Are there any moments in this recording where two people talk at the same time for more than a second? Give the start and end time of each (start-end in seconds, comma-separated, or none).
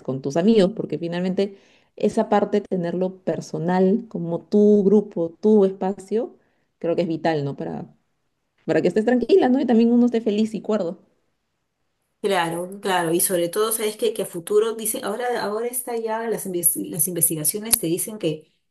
none